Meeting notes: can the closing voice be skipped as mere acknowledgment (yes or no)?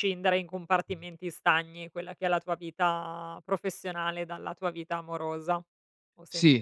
no